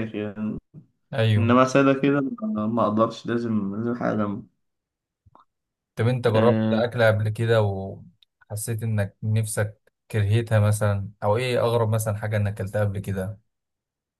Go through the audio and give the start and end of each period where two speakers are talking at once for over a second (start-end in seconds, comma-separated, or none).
none